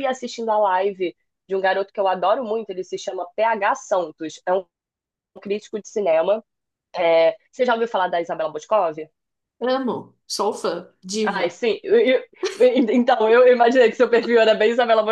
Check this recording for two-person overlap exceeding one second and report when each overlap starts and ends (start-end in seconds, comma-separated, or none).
none